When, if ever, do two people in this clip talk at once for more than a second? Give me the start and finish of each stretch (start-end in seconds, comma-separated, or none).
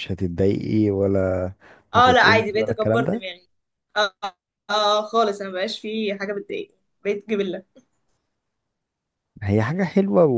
1.9-3.2